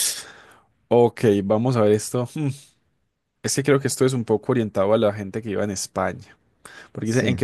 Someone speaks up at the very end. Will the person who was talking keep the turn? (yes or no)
yes